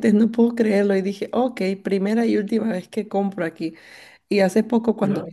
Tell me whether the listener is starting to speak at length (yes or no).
no